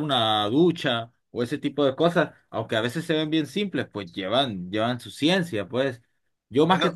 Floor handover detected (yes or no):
no